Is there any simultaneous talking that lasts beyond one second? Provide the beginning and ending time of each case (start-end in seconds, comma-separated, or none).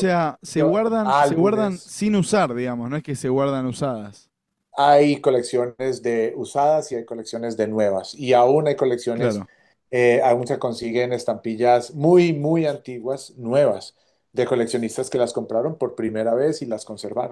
0.5-1.9